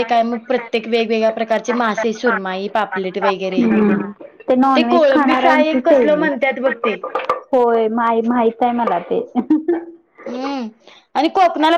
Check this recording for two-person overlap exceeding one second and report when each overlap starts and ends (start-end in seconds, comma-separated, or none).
4.8-6.3